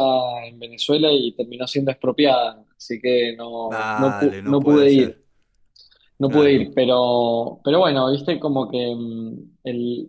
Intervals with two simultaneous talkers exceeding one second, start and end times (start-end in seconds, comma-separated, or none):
3.6-5.2